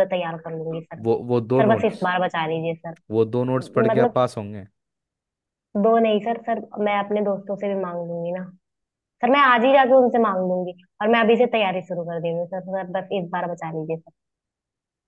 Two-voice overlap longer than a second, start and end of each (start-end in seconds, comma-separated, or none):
none